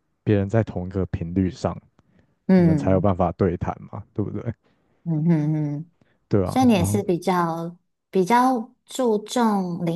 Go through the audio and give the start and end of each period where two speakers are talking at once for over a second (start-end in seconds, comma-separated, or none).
none